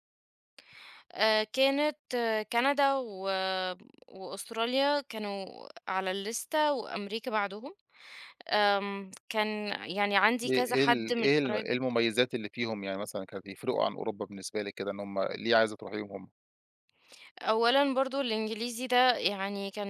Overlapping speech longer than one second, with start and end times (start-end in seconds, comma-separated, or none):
10.5-11.8